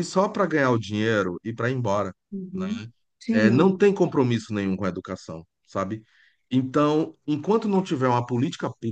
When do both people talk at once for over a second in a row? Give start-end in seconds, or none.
none